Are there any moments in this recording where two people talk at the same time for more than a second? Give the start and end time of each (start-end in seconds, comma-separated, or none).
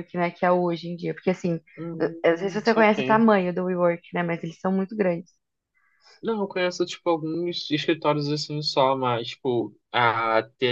2.0-3.2